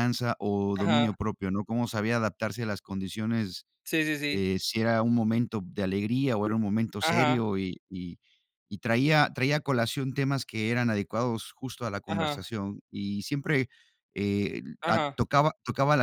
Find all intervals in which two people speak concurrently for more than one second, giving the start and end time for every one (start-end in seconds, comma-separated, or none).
none